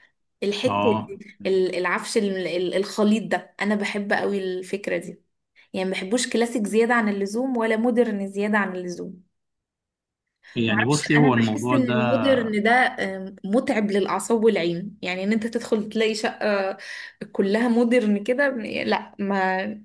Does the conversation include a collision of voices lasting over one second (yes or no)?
yes